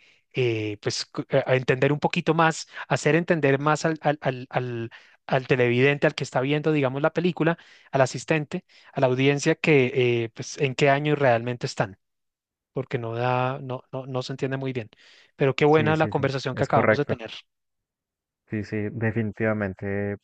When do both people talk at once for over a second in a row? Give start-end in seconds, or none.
15.7-17.1